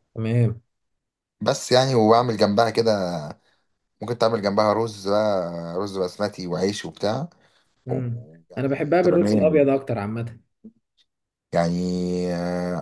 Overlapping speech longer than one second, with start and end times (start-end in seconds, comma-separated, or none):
7.9-9.7